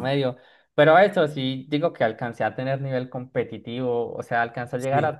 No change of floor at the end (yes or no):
yes